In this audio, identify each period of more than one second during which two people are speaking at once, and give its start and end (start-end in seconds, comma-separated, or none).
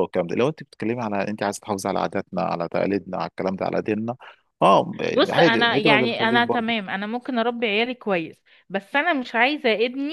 5.3-6.8